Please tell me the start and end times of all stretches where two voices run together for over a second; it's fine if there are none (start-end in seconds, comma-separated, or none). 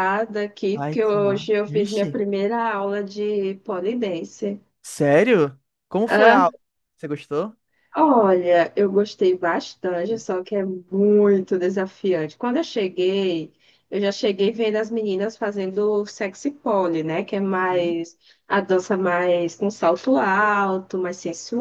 0.7-2.2